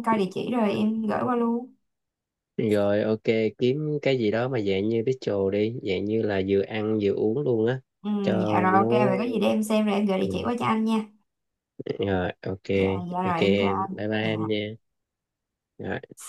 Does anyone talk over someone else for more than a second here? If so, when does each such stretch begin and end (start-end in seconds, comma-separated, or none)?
13.2-14.6